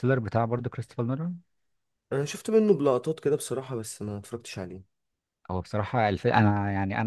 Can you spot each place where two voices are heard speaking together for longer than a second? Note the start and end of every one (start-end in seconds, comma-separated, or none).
none